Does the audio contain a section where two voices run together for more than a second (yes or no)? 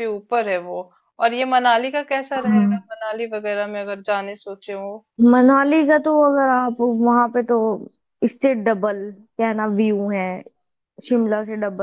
no